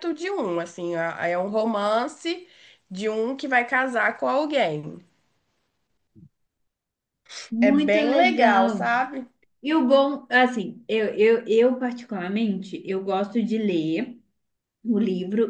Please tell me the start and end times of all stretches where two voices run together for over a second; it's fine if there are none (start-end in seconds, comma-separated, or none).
7.6-8.9